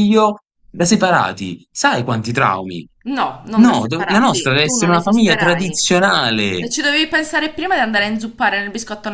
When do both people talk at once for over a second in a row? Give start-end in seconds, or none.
3.6-5.9